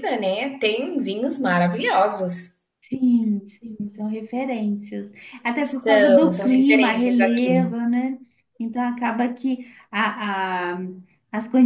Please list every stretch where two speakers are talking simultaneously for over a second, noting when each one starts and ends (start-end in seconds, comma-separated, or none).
5.6-7.6